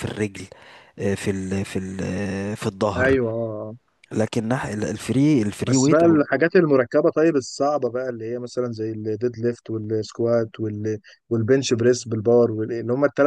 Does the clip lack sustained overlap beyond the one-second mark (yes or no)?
yes